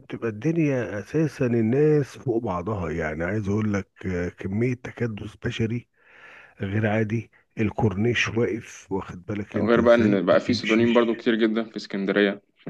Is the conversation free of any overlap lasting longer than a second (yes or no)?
no